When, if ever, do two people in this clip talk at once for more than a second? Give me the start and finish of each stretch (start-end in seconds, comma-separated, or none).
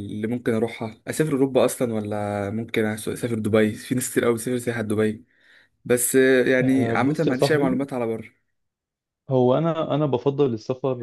6.6-7.8